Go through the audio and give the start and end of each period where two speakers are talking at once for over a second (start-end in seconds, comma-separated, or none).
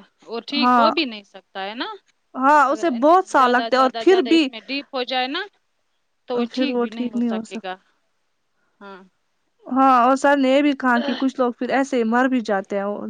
2.7-4.5